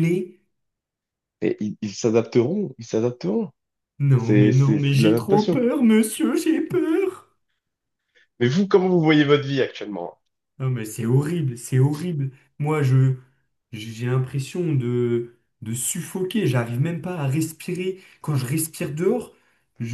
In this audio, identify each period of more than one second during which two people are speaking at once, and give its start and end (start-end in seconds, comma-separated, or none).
4.2-5.6